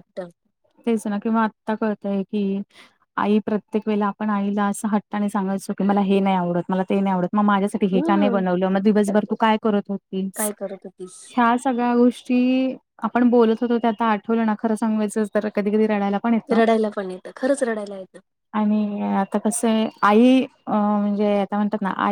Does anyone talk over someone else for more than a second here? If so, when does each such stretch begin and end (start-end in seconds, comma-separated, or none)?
none